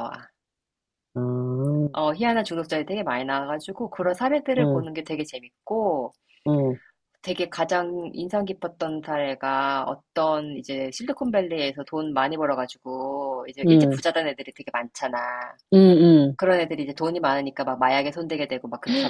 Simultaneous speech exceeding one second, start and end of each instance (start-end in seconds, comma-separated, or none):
none